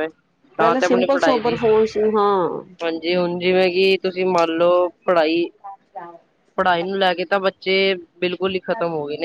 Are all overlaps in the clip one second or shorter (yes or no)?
no